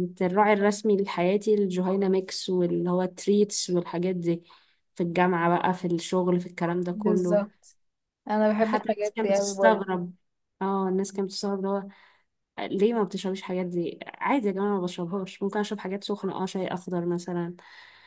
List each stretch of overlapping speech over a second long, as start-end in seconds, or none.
8.6-9.9